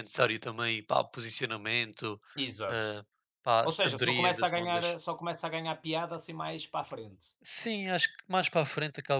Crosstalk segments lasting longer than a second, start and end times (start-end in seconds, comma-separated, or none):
3.6-4.8